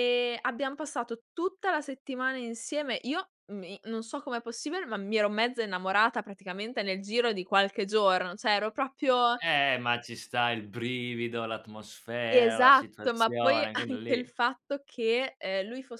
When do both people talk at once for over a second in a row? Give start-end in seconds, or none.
12.3-14.3